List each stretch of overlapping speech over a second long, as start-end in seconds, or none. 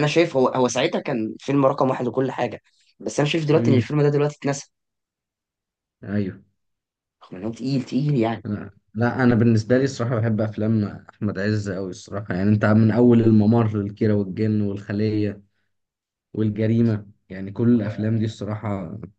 none